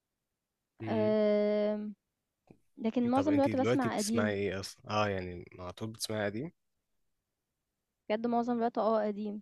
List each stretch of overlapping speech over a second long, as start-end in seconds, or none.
3.1-4.3